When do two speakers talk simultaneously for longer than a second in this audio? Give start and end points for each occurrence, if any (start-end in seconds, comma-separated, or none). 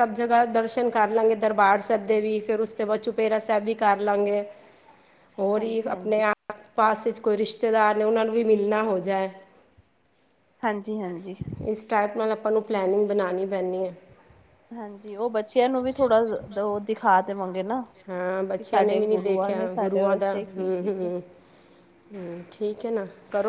18.6-21.1